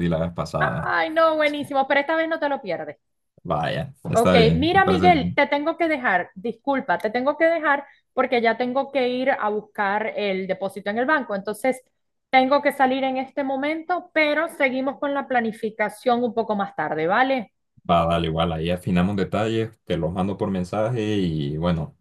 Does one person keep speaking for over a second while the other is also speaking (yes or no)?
yes